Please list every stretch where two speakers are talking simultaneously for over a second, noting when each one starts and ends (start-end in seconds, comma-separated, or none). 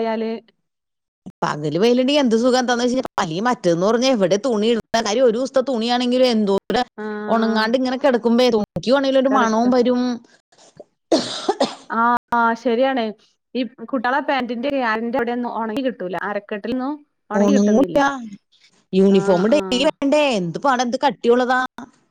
none